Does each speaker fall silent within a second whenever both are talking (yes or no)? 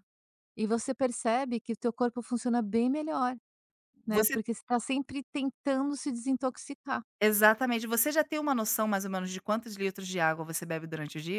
yes